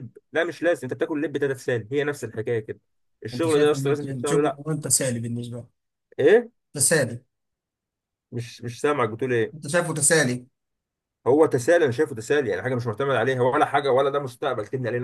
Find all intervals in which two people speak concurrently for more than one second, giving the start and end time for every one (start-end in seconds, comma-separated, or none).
3.3-4.6